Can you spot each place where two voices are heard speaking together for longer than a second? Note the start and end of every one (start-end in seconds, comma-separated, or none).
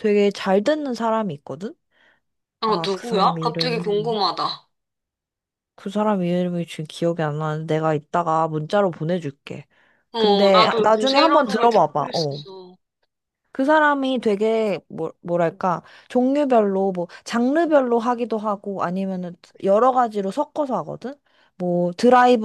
2.6-4.2, 10.2-12.4